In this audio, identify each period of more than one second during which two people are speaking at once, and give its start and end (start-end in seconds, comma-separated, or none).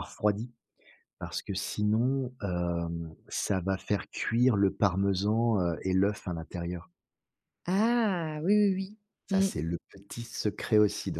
none